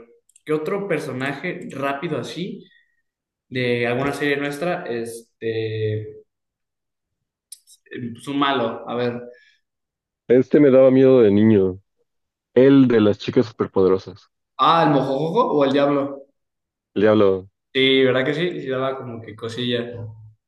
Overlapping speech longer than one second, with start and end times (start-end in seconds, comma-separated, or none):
none